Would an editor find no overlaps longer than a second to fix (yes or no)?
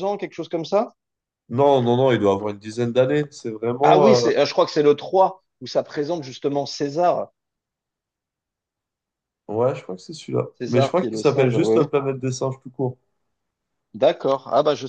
no